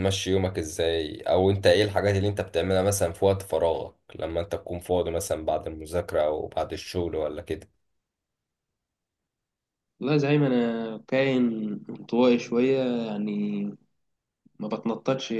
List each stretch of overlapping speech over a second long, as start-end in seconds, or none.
none